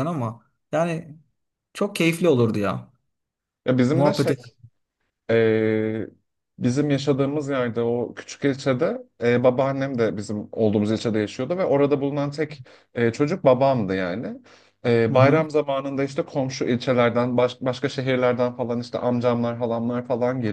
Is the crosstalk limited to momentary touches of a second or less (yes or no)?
yes